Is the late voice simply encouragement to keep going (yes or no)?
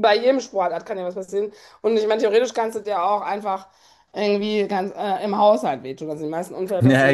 no